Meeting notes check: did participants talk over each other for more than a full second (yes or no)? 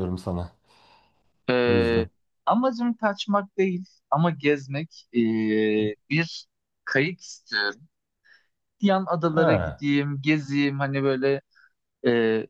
no